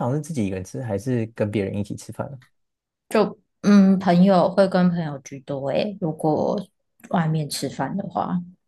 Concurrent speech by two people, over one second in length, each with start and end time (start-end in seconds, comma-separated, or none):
none